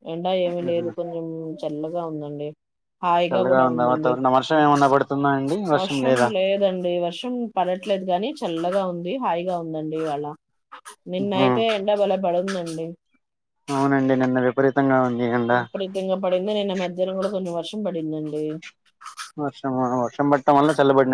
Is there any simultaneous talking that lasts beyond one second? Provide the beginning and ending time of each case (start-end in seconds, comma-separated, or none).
none